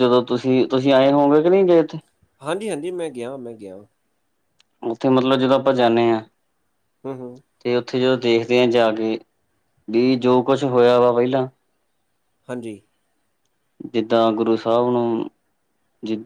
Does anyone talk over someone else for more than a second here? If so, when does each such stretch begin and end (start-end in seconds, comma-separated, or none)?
none